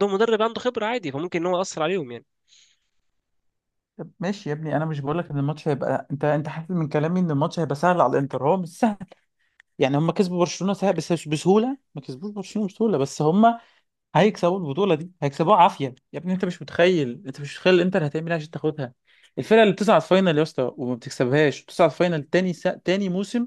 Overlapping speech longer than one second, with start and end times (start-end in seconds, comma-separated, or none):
none